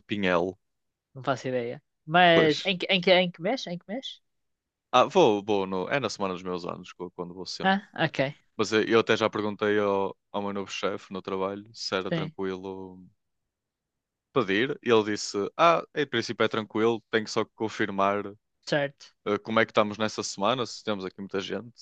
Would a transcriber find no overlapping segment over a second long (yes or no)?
yes